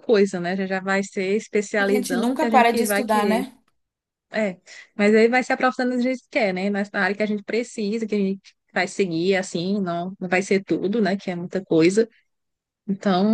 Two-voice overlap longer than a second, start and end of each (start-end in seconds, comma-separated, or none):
1.8-3.5